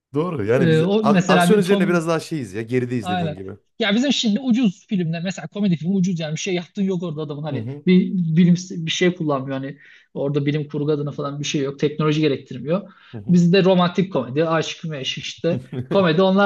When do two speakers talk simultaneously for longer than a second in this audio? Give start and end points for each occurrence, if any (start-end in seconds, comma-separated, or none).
0.6-2.0